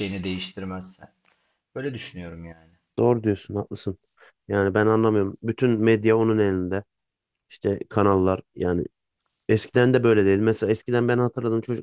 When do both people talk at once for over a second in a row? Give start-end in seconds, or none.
none